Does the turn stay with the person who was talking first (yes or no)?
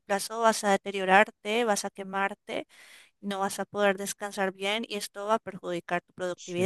no